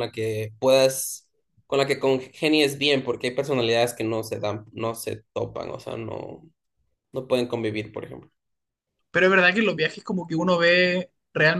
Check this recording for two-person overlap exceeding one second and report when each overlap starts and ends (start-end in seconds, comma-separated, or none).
none